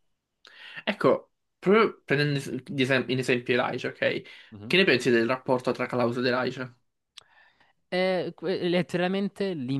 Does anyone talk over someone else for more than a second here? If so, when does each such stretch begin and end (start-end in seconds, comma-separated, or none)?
none